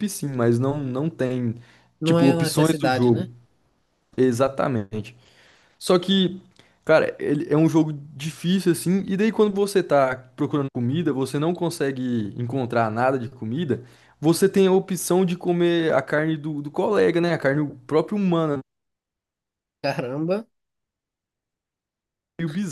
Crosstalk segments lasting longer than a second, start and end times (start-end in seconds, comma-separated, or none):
2.0-3.3